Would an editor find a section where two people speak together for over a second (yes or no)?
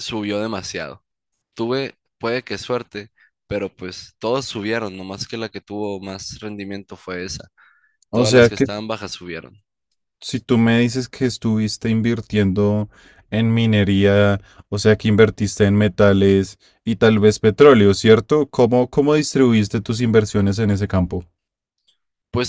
no